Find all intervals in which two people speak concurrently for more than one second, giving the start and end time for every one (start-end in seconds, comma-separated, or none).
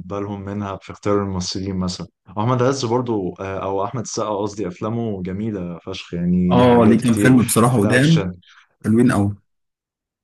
6.5-8.2